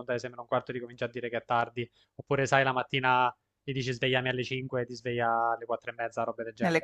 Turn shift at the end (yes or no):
yes